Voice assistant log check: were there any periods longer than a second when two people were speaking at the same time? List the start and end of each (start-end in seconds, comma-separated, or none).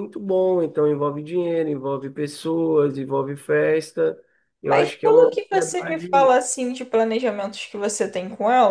4.6-6.3